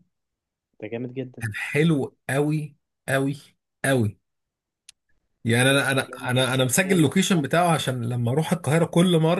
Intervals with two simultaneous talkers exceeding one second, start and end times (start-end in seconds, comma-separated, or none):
5.6-7.1